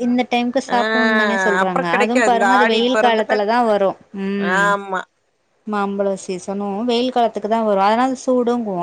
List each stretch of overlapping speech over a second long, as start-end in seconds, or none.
0.7-3.4